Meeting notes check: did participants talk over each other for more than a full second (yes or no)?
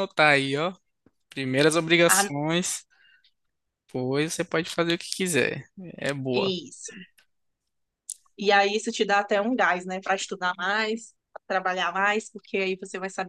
no